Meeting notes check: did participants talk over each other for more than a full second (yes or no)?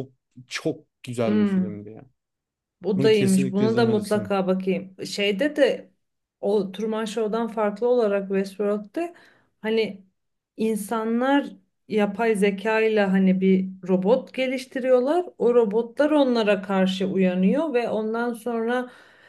yes